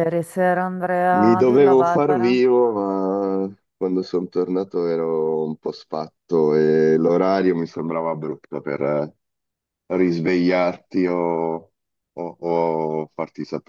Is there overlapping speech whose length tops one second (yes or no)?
yes